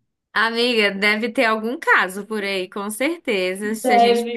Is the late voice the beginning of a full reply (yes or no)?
no